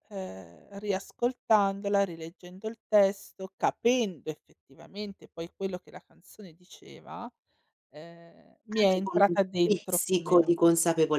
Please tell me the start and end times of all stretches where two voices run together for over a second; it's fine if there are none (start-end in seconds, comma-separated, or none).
8.8-10.5